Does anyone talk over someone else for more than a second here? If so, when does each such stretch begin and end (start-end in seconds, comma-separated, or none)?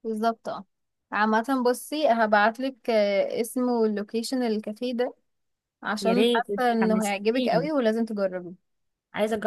6.0-7.7